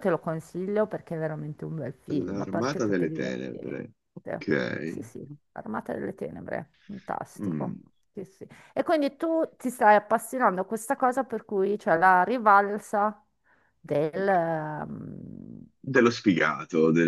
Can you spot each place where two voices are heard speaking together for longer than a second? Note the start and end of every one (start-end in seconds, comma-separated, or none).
2.1-3.8